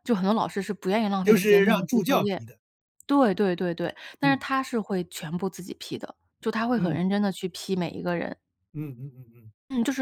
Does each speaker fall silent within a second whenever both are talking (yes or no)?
no